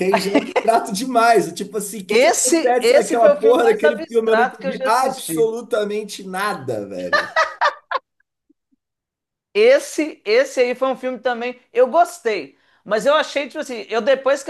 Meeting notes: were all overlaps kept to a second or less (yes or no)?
no